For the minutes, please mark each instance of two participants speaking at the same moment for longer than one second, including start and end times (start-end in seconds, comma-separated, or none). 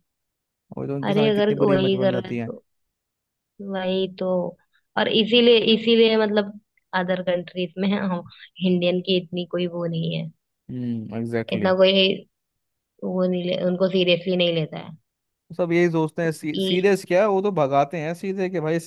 1.1-2.5